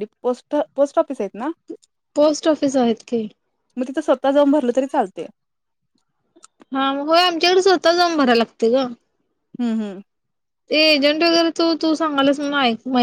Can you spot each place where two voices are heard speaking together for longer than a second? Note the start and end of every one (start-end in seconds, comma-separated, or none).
none